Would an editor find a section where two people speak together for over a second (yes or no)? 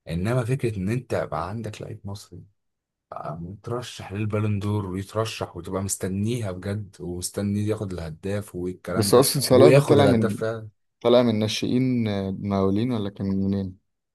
yes